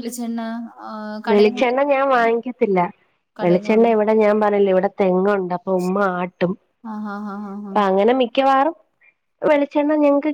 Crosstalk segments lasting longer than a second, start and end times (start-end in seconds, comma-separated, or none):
none